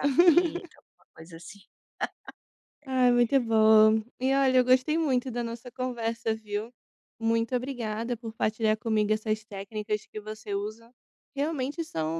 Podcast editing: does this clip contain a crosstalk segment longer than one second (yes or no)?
no